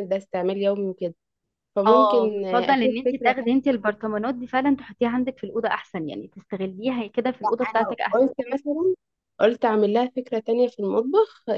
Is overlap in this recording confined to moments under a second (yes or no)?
no